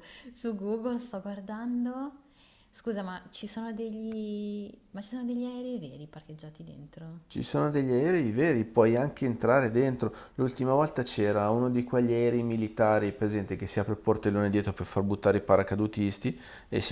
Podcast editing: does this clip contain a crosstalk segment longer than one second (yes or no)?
no